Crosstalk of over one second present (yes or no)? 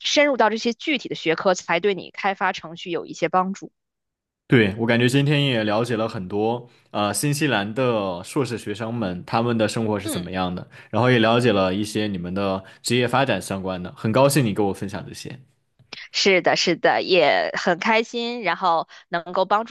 no